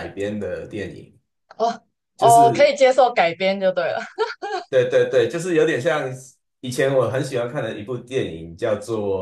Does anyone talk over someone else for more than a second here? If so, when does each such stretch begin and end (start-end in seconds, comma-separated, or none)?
none